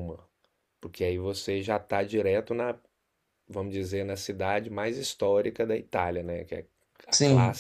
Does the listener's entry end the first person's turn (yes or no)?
no